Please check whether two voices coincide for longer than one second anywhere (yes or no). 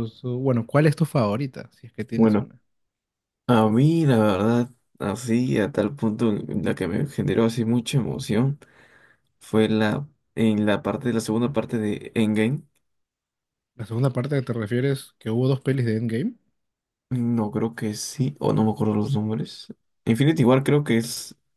no